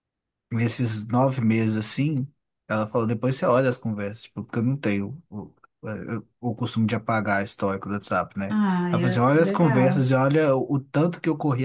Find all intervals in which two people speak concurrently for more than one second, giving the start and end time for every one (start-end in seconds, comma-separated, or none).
8.5-10.1